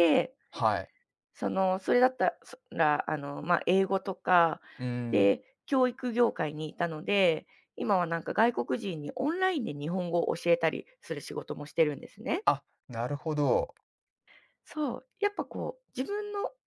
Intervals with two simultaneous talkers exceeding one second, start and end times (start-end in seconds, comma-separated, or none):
none